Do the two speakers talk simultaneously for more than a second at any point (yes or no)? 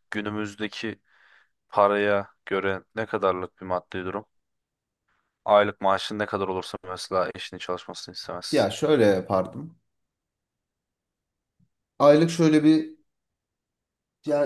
no